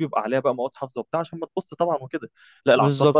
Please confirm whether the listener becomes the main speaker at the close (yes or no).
no